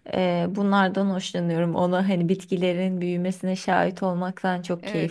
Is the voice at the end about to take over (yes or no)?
yes